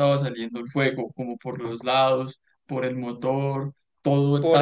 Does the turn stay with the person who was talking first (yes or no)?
no